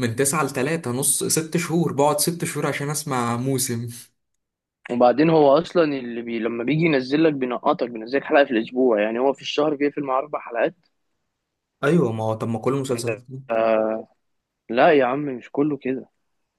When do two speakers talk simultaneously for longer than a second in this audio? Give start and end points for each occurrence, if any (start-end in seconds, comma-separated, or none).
none